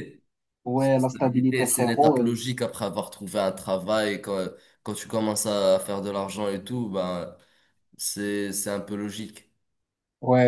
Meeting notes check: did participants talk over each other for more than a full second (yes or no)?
yes